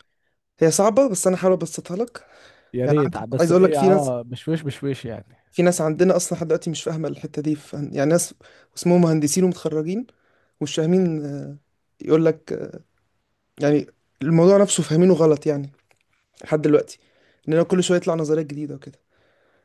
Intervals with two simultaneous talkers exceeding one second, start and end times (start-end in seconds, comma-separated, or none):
2.9-4.1